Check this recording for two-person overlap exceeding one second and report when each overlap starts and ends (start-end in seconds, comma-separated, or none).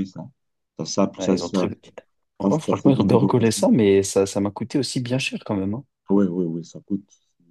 2.4-3.6